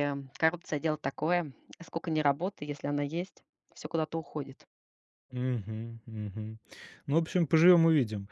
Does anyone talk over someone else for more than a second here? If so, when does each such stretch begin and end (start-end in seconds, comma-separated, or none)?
none